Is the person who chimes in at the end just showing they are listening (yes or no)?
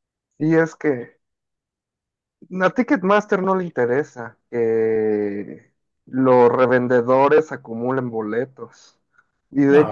yes